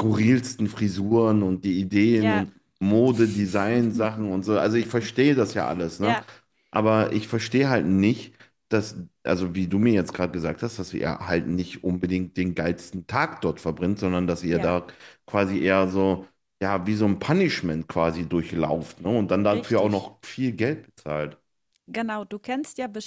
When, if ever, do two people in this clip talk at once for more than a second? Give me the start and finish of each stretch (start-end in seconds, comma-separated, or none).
none